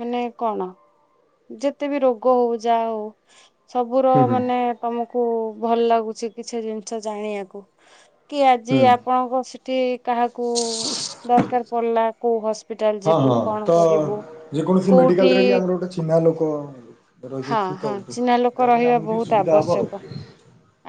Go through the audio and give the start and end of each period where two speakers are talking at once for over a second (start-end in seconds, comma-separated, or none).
17.5-19.8